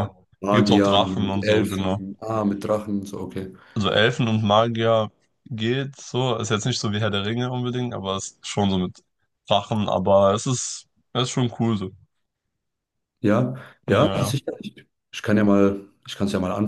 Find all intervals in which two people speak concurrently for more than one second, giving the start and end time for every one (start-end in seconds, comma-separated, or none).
0.5-2.0